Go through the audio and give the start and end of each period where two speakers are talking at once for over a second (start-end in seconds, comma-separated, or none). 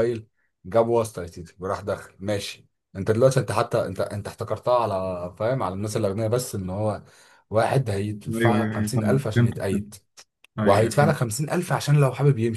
8.3-9.9